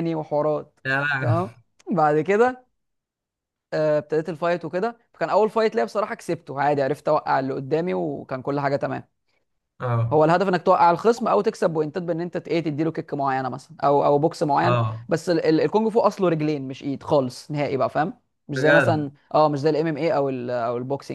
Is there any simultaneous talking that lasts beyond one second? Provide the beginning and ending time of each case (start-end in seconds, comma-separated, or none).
none